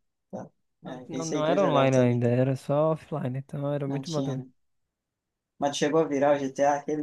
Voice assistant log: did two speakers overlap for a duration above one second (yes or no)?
yes